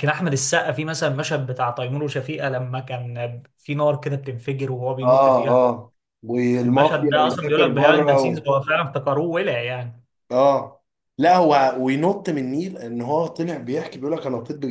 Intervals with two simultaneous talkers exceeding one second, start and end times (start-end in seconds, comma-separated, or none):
6.6-8.5